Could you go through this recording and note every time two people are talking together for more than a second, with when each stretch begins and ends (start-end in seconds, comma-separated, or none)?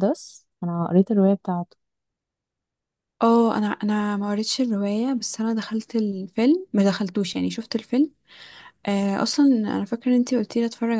none